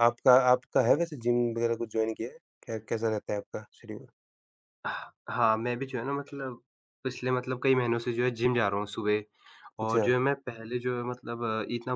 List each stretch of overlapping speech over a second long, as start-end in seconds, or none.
none